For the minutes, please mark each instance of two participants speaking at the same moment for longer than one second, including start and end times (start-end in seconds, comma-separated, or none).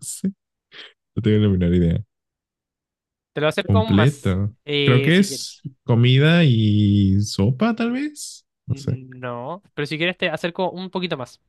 3.6-5.5